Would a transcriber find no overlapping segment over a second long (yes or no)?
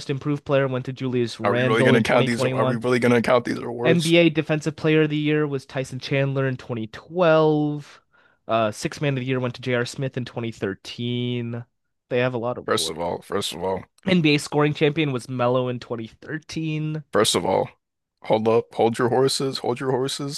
no